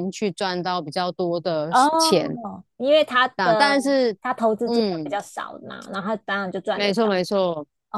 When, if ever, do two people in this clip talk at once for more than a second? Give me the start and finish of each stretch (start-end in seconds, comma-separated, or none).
none